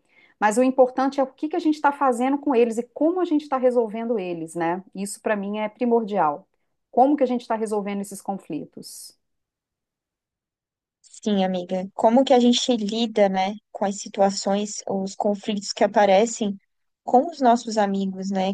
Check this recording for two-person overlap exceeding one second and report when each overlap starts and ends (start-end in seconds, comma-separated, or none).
none